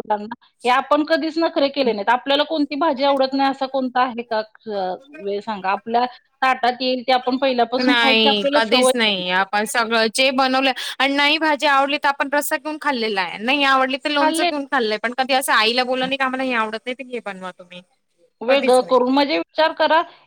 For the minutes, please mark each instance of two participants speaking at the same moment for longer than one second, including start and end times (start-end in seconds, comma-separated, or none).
7.8-9.4